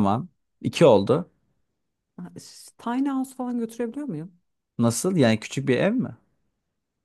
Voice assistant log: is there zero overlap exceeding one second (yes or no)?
yes